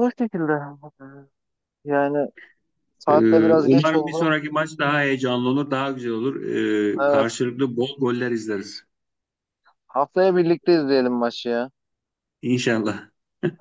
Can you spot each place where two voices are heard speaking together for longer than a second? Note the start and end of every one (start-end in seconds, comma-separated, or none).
3.1-4.3